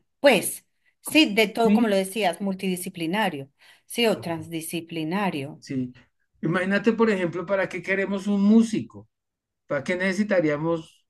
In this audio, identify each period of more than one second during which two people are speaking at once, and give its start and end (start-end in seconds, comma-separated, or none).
none